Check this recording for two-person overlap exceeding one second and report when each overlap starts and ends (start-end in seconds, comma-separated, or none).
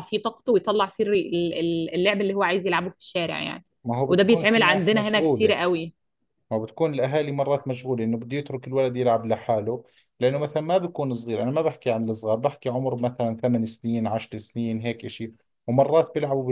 4.1-5.5